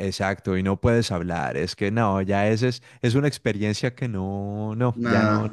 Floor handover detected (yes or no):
yes